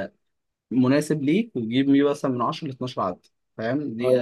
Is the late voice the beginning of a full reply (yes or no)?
yes